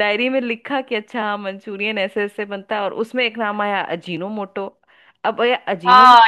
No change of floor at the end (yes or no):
no